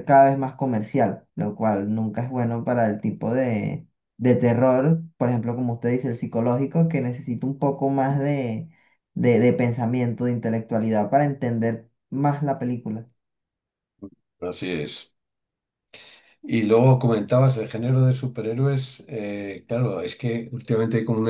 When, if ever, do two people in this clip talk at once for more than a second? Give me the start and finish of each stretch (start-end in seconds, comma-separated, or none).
none